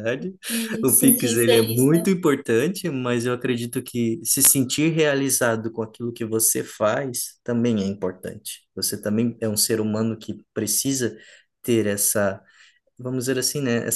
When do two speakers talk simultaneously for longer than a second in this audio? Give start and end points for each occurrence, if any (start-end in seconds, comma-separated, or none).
0.8-2.1